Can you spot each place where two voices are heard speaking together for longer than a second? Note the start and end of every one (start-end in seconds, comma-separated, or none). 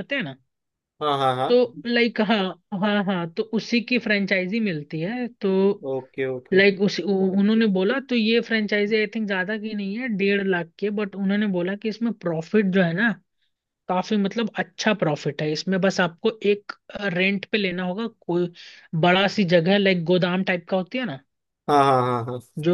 none